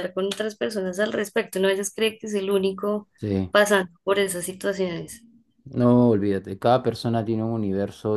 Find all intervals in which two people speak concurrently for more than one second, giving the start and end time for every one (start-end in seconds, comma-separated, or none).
none